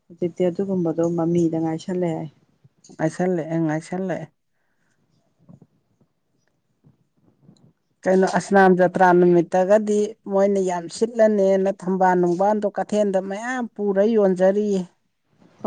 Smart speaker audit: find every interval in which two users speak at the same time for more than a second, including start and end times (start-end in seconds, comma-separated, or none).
none